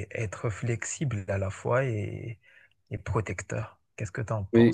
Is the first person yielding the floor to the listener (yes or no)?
yes